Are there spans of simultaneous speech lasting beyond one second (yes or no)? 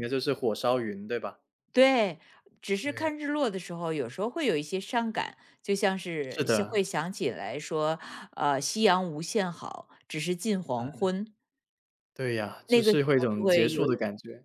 yes